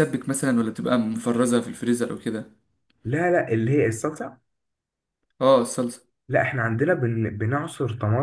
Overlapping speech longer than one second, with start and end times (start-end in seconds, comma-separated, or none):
none